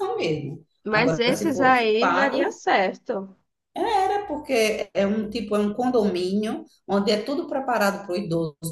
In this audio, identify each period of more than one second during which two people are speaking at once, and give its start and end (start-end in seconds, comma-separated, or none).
0.8-2.6